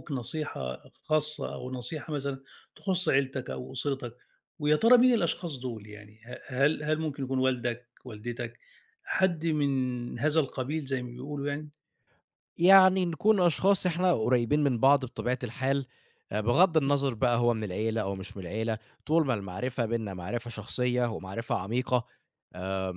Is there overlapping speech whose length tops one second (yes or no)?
no